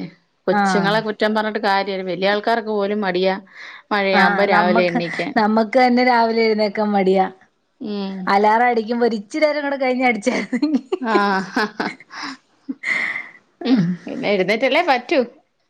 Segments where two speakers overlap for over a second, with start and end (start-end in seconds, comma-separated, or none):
none